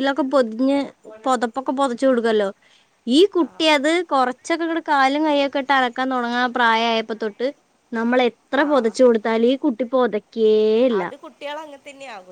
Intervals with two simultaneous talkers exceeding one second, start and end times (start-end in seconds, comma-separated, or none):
none